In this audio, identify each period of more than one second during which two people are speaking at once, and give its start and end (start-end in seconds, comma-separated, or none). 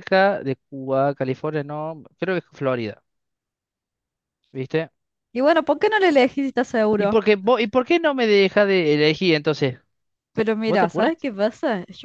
none